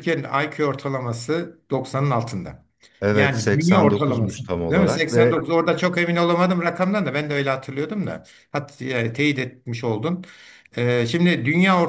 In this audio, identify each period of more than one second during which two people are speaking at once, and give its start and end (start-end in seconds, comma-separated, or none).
3.1-5.5